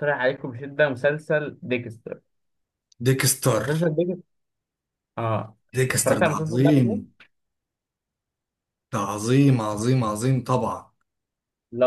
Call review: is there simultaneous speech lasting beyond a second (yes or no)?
yes